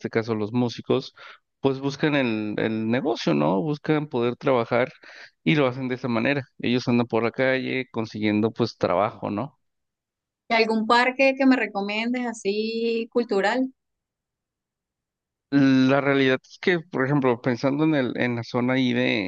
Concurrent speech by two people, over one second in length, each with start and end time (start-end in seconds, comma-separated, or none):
none